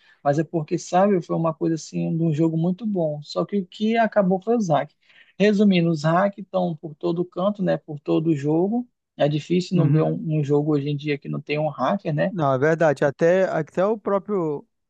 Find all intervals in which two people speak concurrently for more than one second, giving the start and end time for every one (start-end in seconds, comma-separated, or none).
none